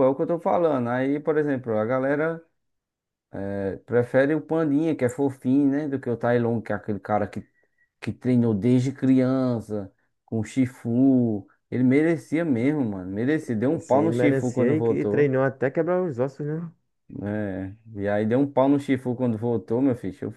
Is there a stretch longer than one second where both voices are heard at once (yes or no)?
yes